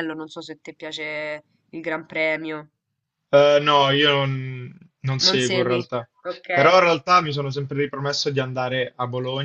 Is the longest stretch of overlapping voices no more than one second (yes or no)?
yes